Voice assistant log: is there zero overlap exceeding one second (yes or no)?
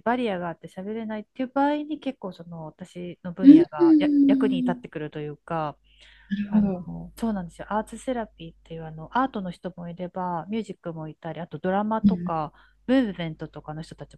no